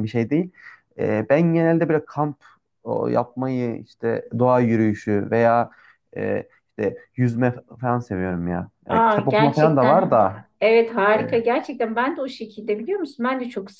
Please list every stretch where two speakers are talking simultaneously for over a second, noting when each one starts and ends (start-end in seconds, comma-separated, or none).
8.9-10.4